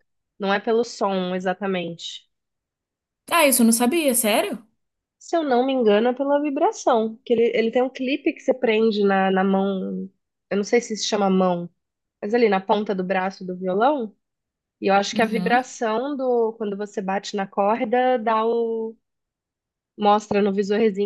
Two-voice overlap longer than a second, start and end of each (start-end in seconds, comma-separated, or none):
none